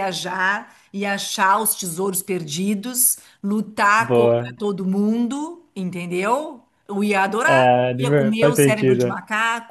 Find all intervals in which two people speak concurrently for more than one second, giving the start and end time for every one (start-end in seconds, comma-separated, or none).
7.5-9.2